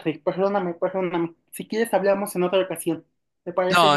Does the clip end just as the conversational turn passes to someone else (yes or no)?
yes